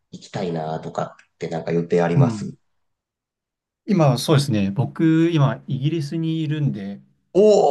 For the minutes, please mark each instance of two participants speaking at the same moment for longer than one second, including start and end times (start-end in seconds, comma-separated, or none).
none